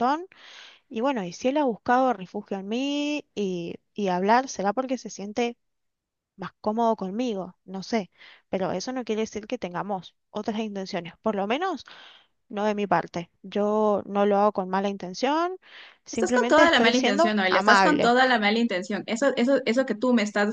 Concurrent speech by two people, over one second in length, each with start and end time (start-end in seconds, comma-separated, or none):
16.1-18.1